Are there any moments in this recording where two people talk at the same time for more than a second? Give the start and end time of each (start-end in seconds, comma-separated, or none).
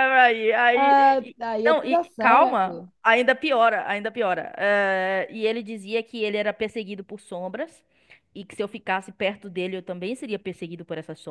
0.7-2.9